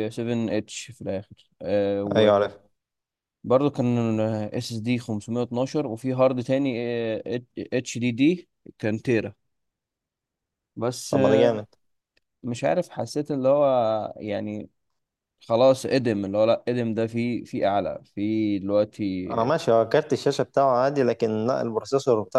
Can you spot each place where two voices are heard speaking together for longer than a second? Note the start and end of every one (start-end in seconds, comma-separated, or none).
none